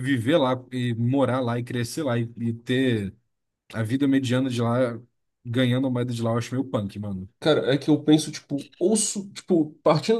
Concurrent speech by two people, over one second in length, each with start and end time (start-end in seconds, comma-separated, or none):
none